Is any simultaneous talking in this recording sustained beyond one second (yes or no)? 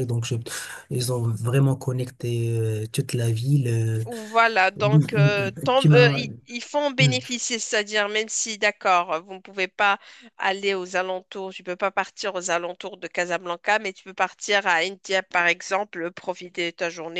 yes